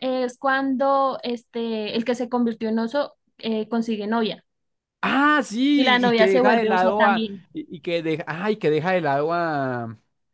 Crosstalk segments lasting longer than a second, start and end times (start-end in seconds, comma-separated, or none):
5.7-7.5